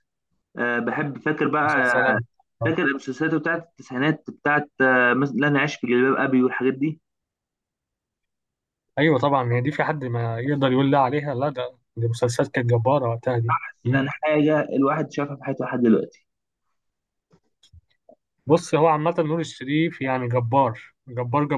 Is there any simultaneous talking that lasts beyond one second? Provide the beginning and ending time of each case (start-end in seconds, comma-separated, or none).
none